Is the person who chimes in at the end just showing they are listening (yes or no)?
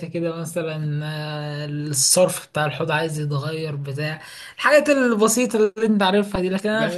no